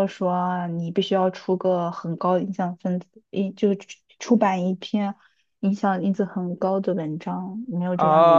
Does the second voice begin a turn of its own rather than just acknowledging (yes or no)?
yes